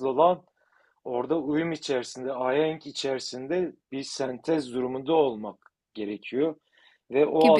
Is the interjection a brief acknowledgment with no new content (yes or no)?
yes